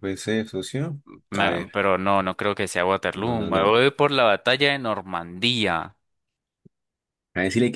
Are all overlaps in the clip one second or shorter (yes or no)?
yes